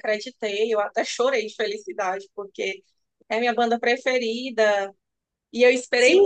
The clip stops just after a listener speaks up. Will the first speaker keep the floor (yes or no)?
no